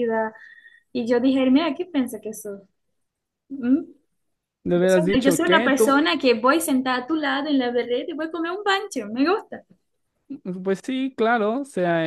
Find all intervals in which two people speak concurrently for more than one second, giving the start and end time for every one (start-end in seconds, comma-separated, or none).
4.7-6.0